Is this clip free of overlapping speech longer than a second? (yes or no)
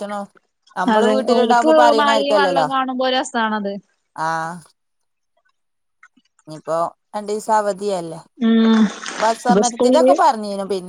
no